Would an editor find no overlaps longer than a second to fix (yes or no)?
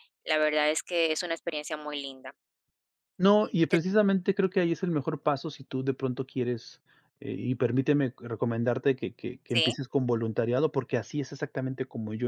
yes